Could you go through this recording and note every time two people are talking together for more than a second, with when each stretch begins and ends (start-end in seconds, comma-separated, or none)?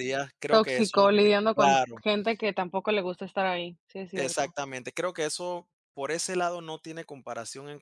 0.5-2.0